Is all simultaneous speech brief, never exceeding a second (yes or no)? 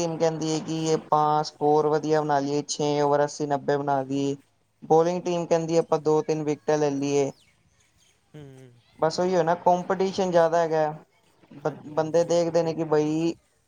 no